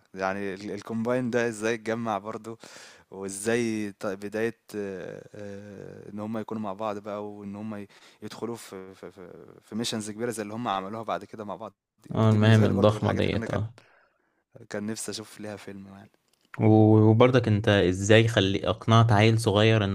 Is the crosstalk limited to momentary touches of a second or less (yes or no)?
no